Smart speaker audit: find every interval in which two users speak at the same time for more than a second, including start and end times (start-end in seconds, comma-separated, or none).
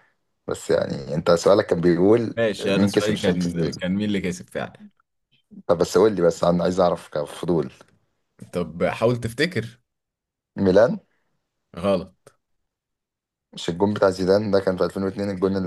2.4-3.8